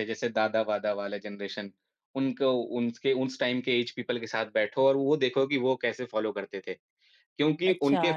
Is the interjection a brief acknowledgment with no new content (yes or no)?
no